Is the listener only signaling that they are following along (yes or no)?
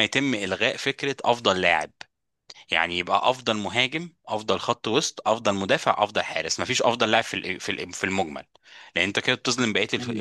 yes